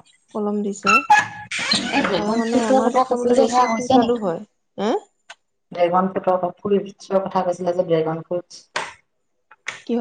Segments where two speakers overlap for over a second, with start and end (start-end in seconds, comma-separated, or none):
2.2-4.3